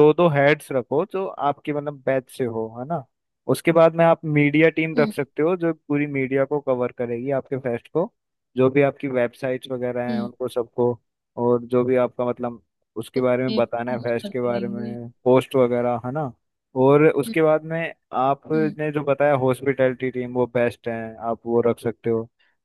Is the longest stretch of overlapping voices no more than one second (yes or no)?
no